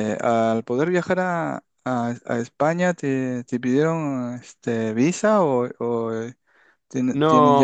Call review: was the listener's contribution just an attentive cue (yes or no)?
no